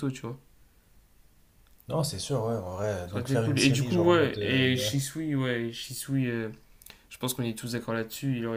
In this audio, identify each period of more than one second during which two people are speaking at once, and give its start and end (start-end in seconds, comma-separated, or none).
3.0-4.6